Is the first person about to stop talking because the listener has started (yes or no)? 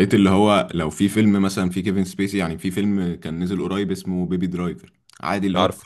no